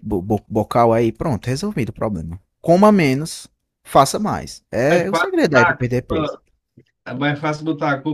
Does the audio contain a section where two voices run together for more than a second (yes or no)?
yes